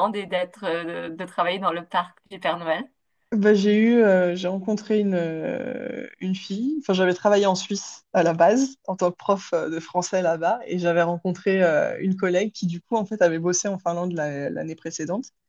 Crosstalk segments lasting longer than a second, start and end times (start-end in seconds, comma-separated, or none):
none